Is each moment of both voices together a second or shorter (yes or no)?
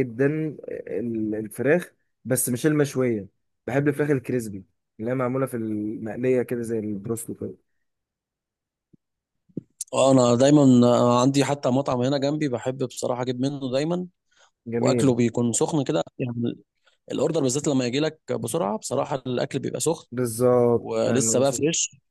yes